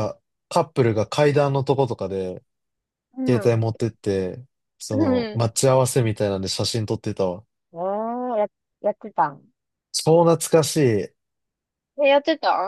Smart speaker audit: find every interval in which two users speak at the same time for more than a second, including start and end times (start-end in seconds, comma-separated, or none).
none